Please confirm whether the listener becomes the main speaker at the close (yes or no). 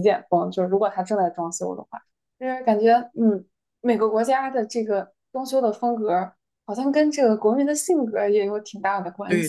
yes